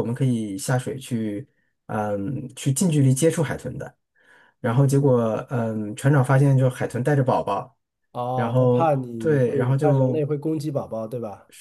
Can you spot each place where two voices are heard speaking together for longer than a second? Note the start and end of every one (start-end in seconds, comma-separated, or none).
8.3-10.2